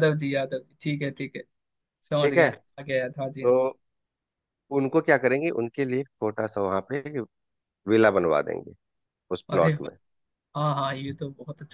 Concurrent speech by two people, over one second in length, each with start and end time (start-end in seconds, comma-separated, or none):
none